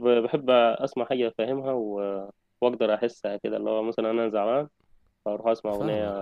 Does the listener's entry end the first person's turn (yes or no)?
yes